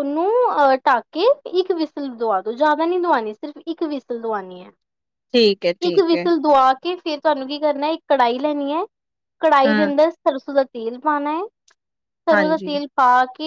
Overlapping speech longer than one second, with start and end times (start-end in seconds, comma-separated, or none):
none